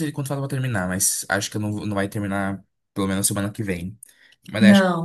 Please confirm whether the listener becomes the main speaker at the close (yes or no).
no